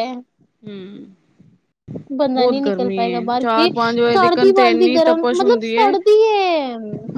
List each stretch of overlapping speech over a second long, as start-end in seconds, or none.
4.1-5.9